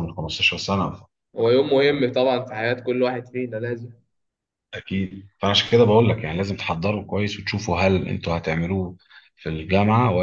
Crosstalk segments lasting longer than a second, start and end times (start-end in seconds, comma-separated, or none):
none